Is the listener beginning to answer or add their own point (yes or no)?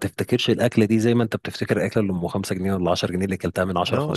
yes